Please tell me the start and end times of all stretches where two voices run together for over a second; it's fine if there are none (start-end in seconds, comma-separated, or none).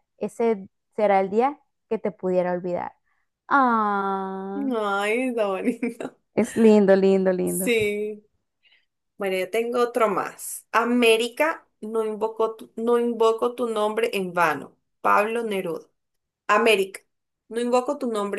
none